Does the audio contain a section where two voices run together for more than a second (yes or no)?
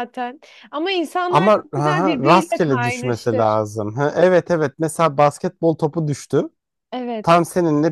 yes